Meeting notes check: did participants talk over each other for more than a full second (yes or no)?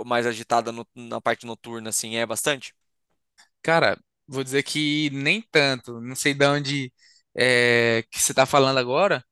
no